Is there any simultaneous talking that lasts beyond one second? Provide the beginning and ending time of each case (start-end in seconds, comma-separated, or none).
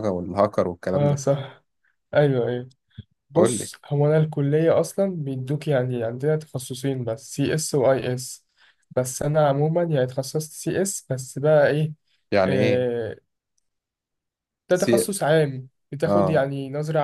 none